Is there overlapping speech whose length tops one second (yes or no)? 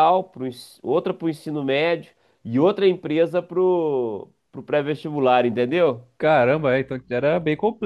no